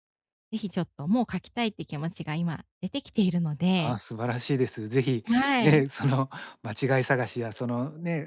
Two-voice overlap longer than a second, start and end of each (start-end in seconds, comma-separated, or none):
none